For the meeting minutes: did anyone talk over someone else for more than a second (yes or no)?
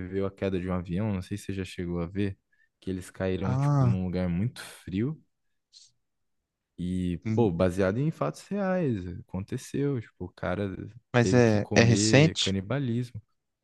yes